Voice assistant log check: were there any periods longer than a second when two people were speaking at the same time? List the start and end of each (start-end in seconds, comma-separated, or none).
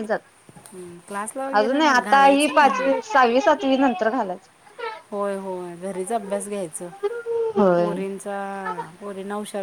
1.6-2.9